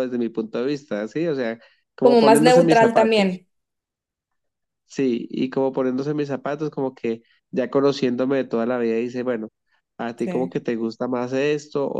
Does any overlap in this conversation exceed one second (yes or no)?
yes